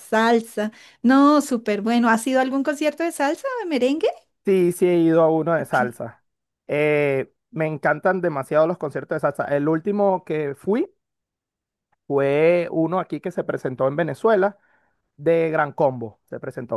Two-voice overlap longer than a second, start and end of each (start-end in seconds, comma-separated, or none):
none